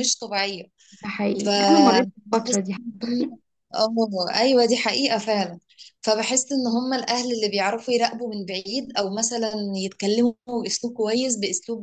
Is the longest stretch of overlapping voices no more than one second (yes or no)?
no